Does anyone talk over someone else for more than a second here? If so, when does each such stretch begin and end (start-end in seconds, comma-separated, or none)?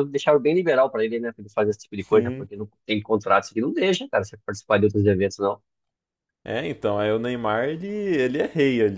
none